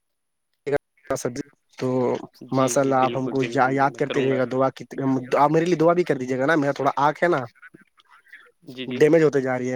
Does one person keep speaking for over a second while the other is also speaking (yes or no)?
yes